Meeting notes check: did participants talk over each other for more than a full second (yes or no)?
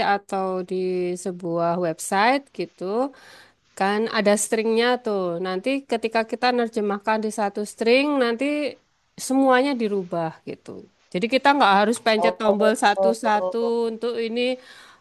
yes